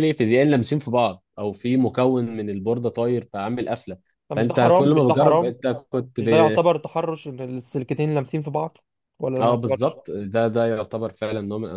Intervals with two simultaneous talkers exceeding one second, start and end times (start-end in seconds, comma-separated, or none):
4.3-5.5